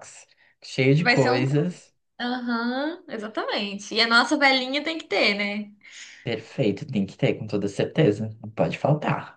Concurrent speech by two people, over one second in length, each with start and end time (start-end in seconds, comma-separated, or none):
none